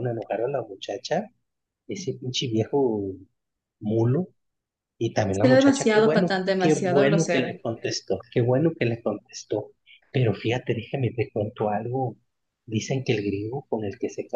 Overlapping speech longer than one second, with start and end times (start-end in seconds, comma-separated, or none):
5.3-7.5